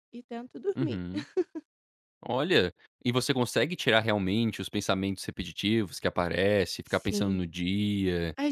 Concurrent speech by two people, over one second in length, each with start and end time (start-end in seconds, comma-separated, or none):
none